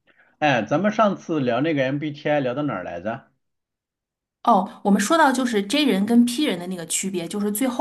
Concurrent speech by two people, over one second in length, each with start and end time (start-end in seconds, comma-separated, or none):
none